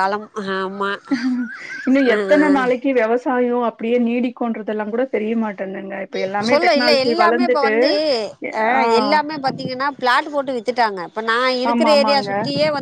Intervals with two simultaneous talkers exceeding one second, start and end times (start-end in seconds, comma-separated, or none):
none